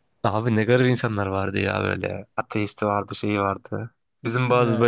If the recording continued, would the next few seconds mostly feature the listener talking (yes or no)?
no